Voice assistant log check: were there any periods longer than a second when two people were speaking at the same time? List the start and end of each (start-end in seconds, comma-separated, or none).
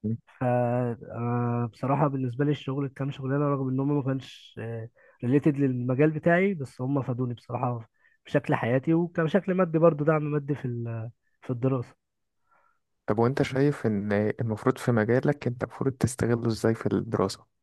none